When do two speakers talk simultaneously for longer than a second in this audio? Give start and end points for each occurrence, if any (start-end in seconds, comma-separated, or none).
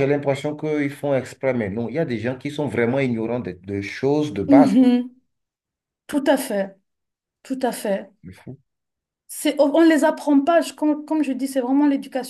none